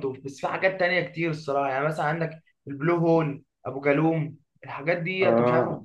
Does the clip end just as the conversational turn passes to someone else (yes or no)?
no